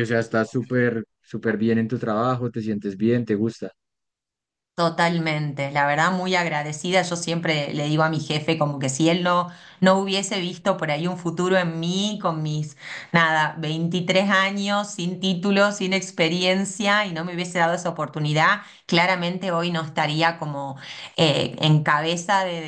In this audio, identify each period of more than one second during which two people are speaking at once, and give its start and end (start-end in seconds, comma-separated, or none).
none